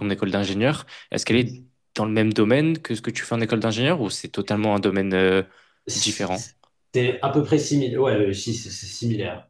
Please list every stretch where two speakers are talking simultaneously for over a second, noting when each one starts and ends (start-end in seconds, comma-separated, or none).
none